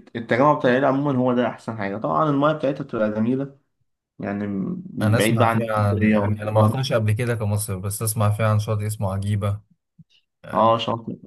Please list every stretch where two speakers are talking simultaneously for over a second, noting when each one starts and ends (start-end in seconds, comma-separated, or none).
5.0-6.8